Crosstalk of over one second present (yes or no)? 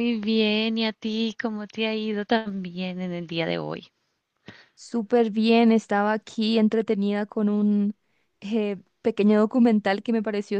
no